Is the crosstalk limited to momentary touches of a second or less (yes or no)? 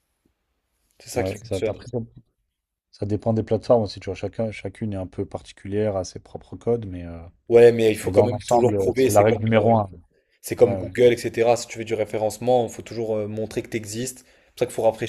no